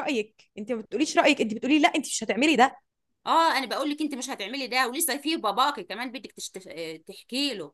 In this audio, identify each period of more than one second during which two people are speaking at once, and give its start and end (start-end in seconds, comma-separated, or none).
none